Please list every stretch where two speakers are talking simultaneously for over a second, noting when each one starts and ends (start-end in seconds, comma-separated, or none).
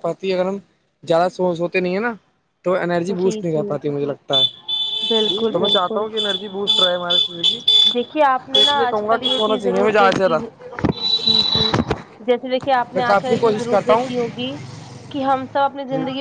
8.5-10.4, 12.9-14.3